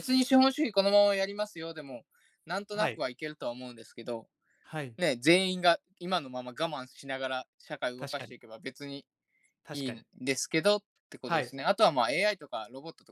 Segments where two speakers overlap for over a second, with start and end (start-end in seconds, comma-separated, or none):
none